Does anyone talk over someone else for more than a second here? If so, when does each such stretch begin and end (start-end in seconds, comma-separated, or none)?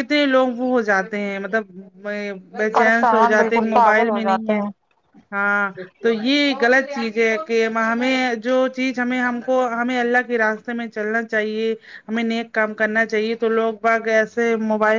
2.7-4.6